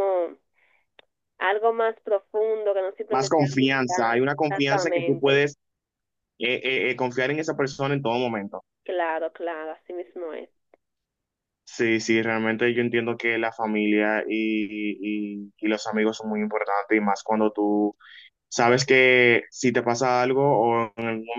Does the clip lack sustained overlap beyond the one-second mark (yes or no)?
no